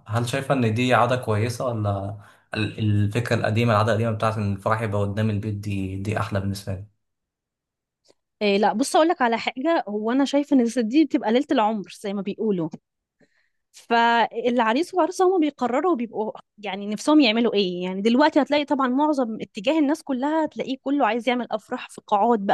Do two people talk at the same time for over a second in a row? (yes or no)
no